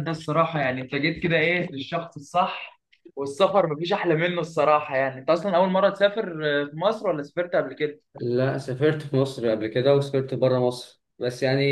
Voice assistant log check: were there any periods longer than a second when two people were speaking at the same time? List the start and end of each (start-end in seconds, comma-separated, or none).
none